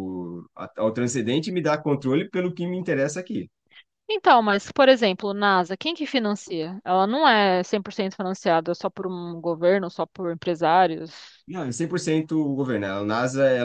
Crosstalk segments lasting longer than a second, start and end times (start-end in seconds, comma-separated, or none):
none